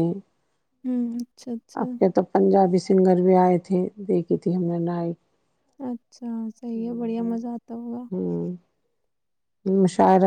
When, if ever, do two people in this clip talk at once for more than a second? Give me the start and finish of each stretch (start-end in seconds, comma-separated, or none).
none